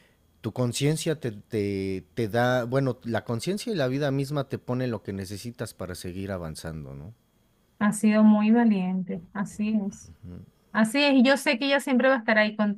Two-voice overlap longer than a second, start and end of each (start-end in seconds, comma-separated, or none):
none